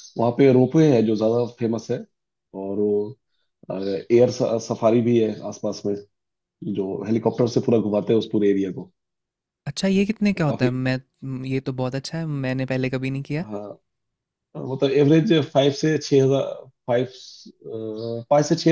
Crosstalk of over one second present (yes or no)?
no